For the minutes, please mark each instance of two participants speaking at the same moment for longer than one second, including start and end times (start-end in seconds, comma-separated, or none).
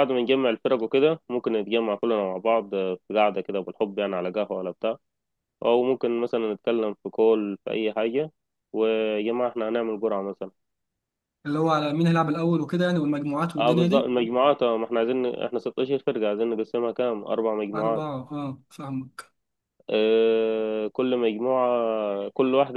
none